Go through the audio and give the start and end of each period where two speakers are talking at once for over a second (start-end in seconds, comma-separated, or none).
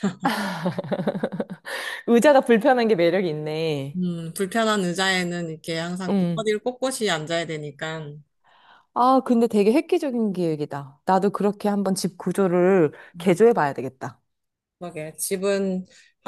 none